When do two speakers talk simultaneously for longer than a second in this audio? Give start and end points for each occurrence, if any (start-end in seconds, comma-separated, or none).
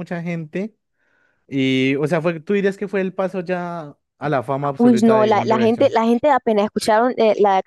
4.8-6.0